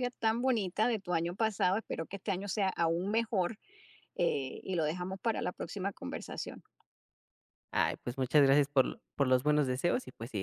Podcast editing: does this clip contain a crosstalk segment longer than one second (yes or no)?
no